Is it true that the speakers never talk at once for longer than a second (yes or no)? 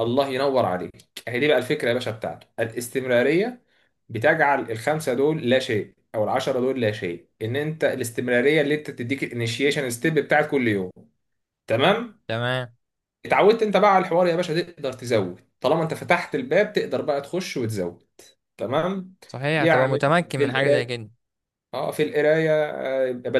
no